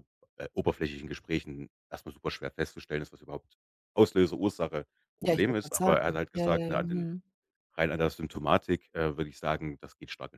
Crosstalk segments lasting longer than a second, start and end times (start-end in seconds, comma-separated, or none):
5.2-7.0